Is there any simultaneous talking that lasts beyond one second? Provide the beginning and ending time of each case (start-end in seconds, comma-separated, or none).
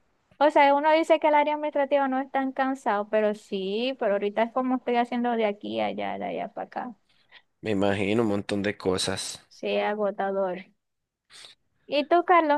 none